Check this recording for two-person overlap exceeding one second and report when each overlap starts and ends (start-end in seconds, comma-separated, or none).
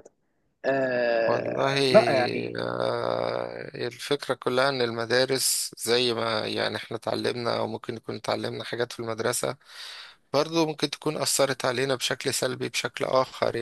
none